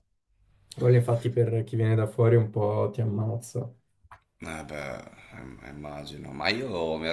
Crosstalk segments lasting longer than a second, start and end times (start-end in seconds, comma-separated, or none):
none